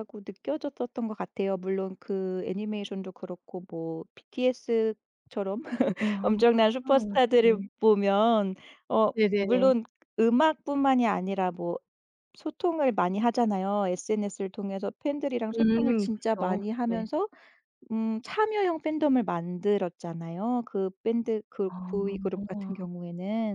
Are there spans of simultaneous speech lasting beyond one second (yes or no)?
yes